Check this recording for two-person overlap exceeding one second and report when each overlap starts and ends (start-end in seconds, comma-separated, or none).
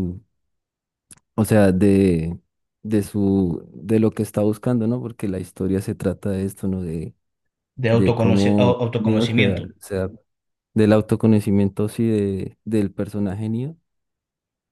7.9-9.7